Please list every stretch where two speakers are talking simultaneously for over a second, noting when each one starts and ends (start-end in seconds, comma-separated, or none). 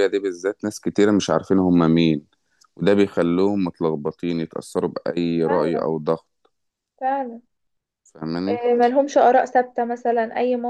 none